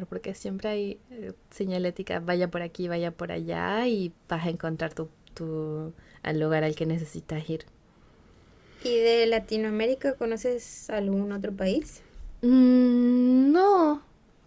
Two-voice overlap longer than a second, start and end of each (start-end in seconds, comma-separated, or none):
none